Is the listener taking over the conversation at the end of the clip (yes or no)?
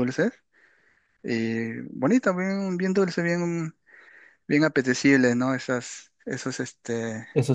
yes